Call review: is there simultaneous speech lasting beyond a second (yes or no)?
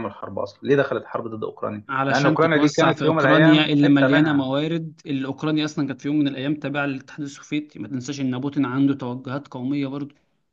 yes